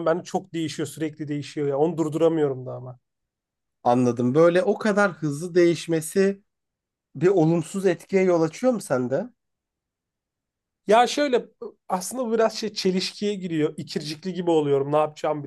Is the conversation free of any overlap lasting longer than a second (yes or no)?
yes